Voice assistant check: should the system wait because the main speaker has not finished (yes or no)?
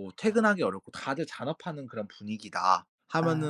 yes